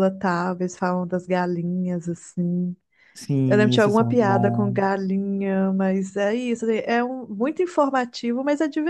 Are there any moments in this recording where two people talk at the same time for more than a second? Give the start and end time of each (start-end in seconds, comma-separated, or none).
3.5-4.8